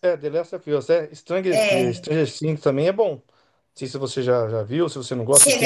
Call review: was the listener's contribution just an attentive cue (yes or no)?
no